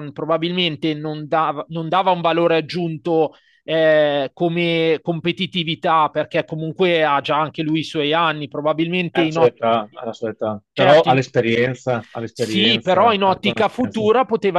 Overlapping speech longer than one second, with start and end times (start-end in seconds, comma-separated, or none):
12.3-14.1